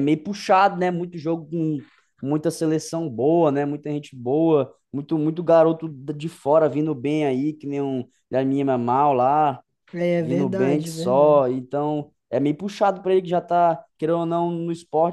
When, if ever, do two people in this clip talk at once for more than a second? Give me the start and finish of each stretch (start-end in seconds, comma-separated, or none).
10.2-11.4